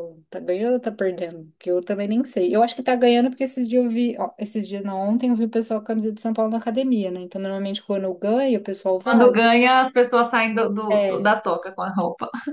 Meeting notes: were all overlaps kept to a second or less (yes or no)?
yes